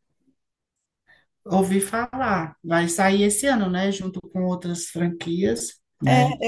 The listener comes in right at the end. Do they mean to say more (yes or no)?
yes